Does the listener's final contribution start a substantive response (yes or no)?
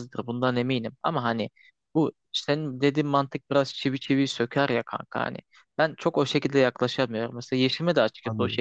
no